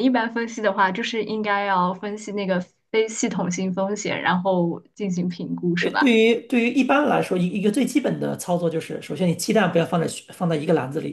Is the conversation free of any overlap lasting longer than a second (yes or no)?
yes